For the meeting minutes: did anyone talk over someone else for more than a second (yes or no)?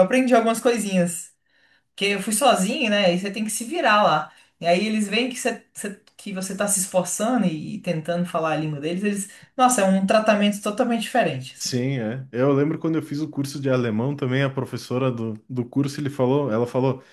no